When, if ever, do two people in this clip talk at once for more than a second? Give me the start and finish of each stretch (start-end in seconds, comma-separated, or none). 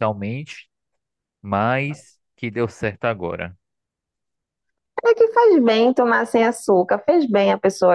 none